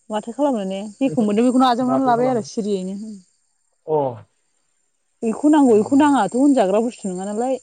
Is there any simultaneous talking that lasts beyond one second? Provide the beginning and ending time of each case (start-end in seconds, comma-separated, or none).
1.1-2.5